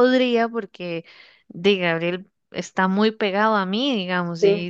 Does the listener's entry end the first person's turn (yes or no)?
no